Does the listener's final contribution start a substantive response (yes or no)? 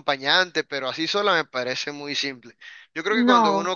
no